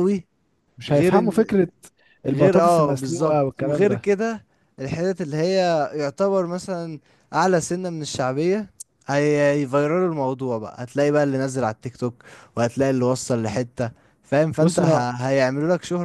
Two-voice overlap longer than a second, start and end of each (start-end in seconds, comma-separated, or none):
2.3-4.1